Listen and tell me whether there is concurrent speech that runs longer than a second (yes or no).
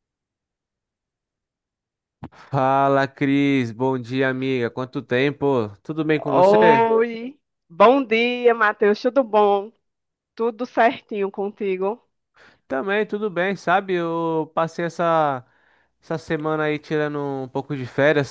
no